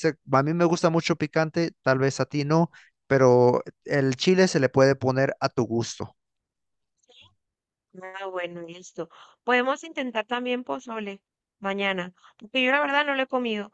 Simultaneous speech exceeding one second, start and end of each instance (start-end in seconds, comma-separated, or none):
none